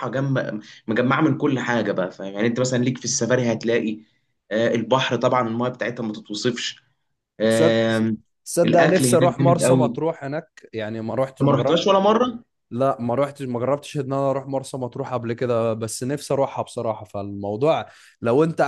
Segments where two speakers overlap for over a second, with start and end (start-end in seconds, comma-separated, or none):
8.6-10.0